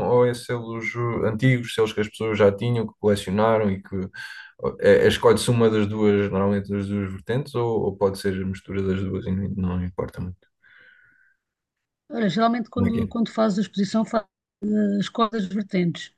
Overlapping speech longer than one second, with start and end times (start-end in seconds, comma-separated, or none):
none